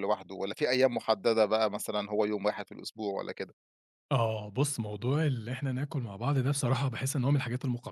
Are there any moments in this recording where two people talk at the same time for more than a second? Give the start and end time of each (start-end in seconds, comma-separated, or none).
none